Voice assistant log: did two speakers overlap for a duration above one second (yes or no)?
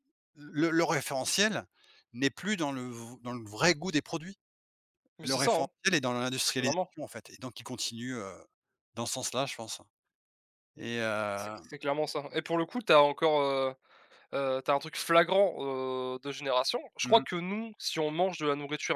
no